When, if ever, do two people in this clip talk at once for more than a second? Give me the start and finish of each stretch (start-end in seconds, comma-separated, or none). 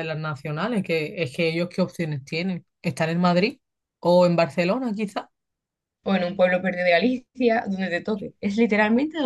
none